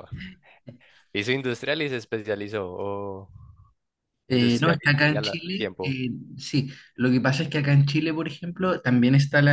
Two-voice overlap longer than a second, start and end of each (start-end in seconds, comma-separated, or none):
4.3-6.0